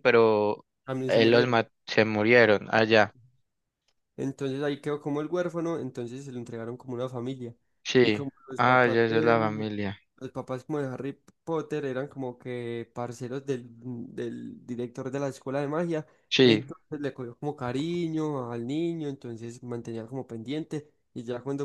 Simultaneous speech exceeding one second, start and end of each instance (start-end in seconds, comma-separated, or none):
8.0-9.6